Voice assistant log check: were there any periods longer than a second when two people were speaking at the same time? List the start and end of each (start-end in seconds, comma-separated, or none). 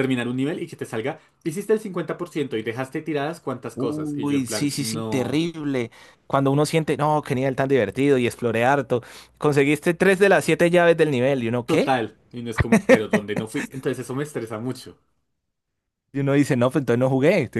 3.7-5.4